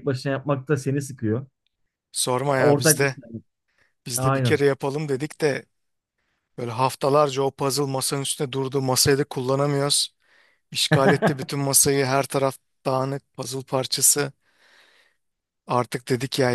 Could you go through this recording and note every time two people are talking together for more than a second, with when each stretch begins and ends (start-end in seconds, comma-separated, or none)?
none